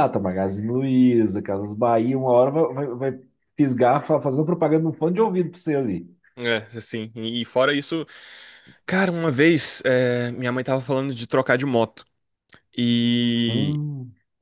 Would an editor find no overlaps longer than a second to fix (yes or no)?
yes